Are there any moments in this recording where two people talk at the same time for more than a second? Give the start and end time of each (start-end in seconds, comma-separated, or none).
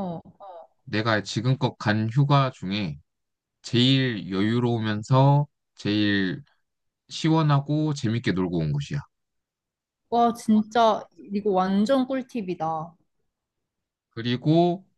none